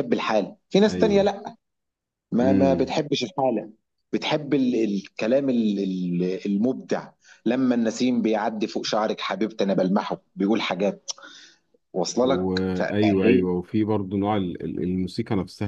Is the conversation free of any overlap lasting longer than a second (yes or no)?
no